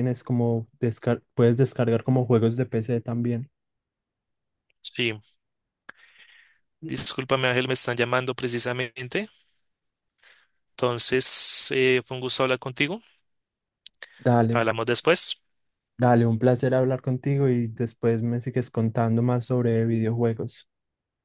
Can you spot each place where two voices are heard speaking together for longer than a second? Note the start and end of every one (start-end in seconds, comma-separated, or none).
none